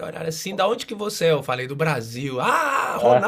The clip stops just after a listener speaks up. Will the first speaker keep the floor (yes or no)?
yes